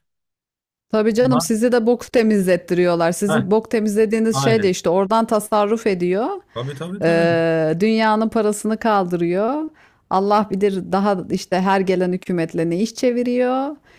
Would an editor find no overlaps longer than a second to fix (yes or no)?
yes